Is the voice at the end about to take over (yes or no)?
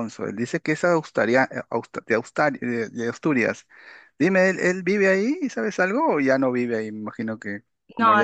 yes